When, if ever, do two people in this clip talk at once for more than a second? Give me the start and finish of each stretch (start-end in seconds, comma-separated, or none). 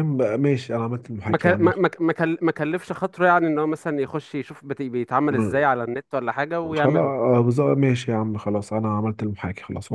none